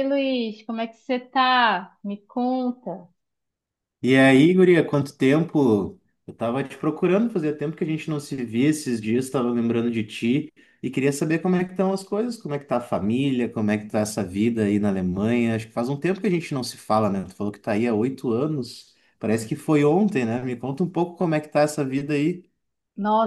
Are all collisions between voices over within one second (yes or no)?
yes